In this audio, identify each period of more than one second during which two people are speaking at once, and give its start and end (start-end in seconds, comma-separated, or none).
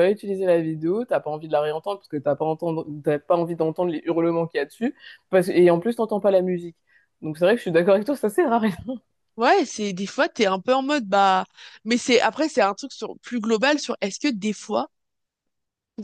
none